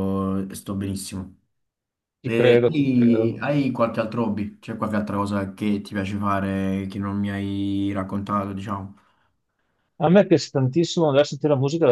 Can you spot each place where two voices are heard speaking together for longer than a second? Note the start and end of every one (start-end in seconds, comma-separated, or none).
2.2-3.5